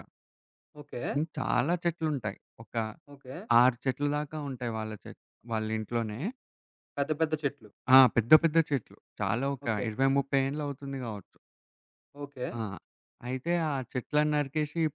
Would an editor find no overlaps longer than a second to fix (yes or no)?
yes